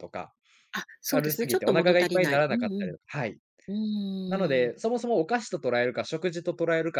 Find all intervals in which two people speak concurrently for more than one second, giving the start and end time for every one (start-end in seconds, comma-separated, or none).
1.1-2.9